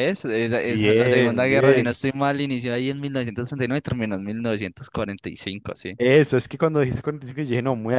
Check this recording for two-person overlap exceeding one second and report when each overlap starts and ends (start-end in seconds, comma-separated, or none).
0.7-2.0